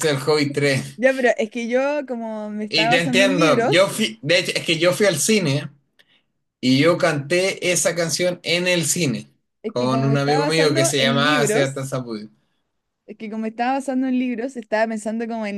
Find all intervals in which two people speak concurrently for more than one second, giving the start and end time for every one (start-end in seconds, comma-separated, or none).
2.7-4.0, 9.7-11.8